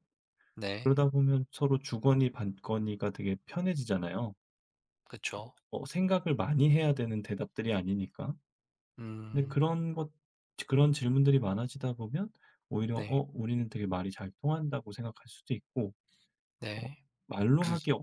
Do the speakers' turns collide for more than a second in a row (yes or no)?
no